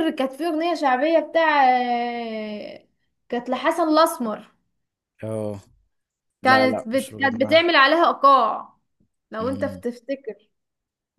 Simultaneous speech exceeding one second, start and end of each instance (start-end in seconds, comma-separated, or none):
6.4-7.7